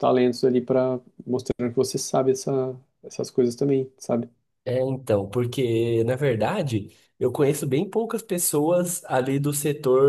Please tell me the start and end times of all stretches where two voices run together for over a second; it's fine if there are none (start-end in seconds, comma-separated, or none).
none